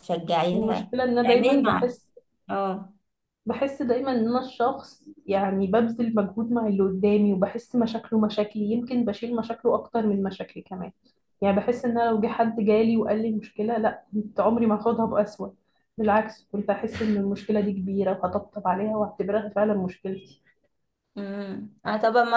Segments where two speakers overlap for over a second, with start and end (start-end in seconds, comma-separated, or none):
0.5-1.9